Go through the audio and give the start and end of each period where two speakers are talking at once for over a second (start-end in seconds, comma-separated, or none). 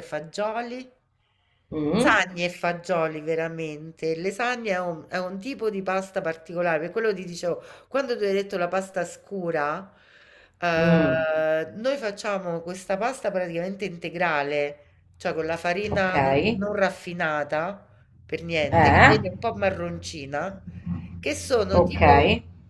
none